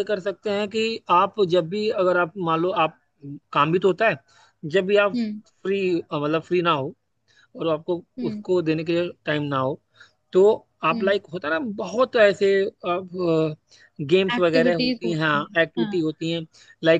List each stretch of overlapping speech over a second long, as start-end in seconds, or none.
14.4-15.9